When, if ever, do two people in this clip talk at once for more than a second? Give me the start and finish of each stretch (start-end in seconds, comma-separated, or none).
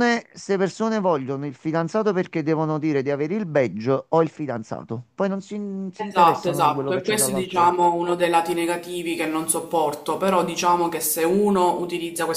5.9-7.8